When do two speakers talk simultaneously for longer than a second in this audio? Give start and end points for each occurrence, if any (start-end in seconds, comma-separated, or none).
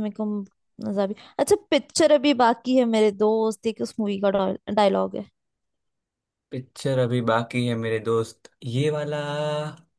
none